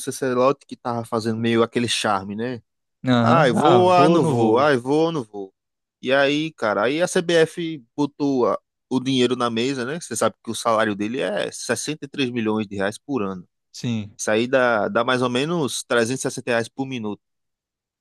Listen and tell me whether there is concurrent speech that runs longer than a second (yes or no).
yes